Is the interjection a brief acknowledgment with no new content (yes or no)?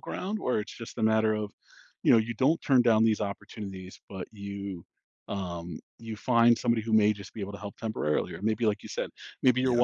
yes